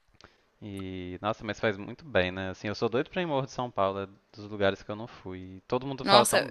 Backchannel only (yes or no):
no